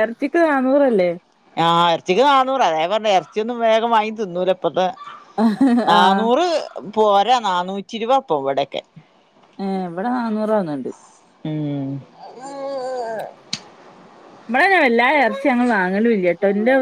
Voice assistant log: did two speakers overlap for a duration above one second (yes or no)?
no